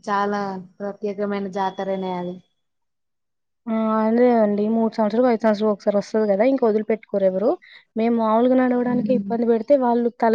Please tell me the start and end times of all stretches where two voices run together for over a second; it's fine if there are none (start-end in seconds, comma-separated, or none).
none